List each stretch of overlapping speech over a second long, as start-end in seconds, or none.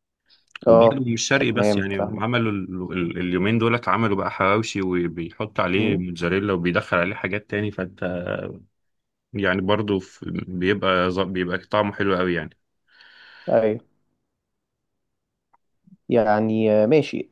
0.7-2.2